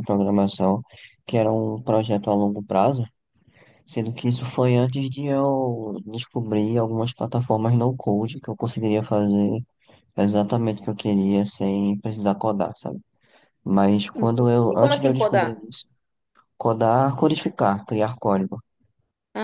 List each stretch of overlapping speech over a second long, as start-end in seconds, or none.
14.2-15.6